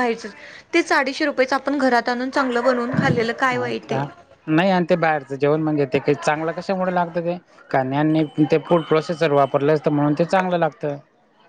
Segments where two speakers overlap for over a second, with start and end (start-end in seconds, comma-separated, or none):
none